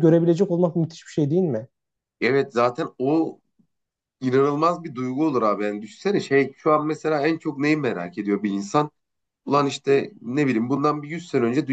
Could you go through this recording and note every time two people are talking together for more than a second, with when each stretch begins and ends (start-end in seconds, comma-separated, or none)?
none